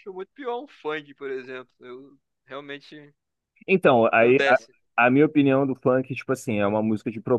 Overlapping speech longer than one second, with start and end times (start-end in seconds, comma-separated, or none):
none